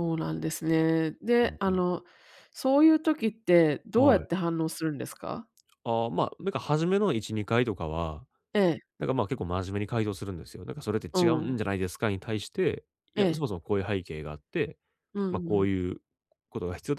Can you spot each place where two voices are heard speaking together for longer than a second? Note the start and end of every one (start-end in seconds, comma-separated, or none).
none